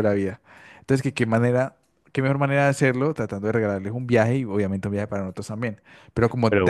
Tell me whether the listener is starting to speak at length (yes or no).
yes